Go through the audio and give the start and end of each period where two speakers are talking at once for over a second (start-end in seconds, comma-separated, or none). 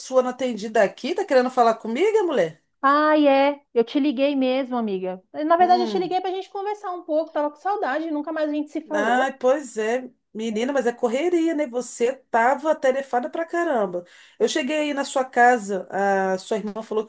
none